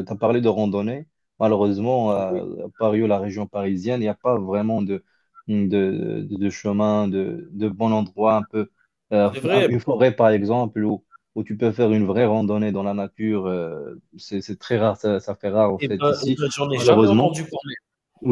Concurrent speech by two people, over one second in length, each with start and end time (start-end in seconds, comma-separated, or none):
15.8-17.4